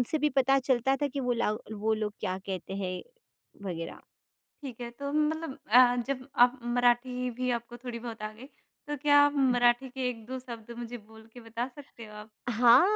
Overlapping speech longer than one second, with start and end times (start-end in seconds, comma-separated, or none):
none